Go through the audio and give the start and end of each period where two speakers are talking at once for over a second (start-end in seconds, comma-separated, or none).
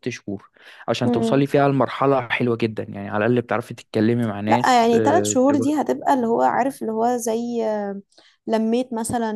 4.5-5.9